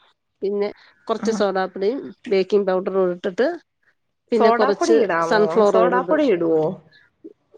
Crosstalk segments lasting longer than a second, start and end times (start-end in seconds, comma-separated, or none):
4.4-6.3